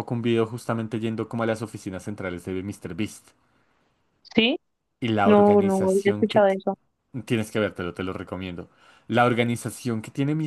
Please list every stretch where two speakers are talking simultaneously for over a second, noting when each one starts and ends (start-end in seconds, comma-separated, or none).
5.2-6.6